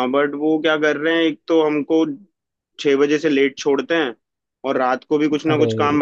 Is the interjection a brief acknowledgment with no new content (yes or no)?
yes